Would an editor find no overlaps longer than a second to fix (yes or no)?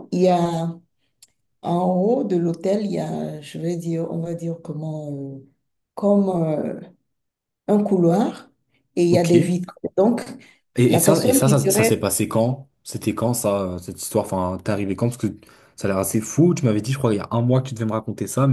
no